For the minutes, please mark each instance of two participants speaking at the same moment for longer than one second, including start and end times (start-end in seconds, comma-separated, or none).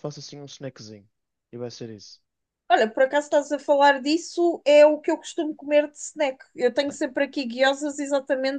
none